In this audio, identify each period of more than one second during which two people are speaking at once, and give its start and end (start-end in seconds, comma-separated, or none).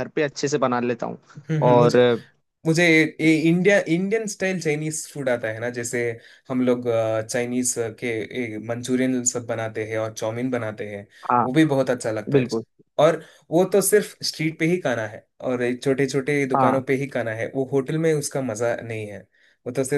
none